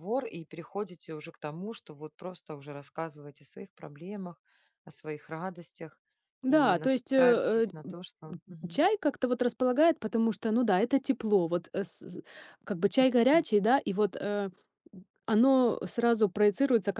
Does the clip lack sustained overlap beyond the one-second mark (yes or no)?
no